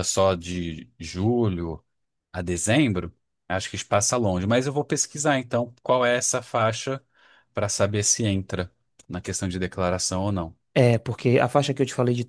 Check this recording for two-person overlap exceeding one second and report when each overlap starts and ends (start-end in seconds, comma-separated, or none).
none